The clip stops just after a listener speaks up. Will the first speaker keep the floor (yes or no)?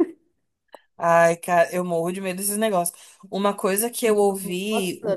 no